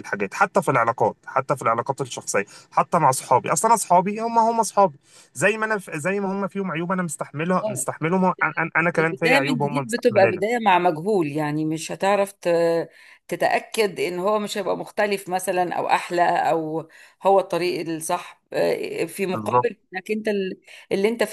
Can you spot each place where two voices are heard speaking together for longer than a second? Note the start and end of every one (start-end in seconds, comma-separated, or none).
9.0-10.4